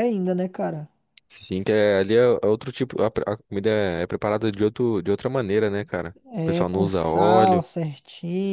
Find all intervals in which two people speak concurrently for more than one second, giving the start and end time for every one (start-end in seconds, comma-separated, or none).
6.3-7.6